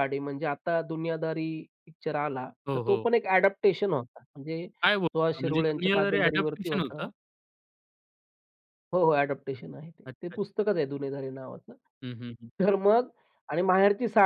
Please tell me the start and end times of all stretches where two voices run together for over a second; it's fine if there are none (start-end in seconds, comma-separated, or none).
4.8-7.1